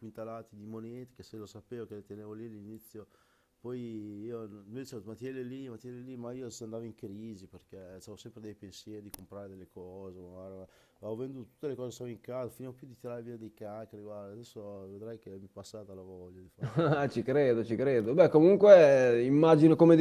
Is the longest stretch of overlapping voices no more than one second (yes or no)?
yes